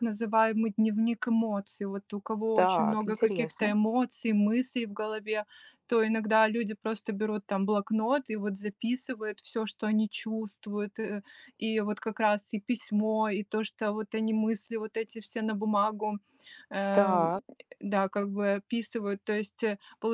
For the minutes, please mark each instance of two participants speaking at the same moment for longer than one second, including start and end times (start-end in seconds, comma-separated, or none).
2.5-3.7